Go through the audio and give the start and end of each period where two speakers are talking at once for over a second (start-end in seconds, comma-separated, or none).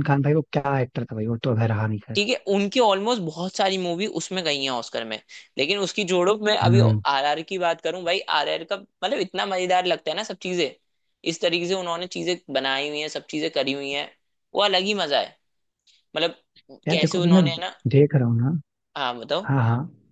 none